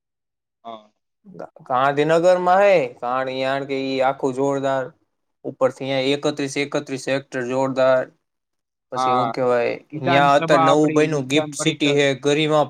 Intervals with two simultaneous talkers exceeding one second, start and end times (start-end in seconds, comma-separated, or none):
10.1-12.0